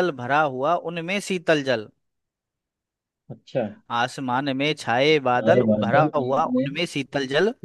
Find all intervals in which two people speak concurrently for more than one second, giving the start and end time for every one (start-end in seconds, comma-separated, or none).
5.4-6.8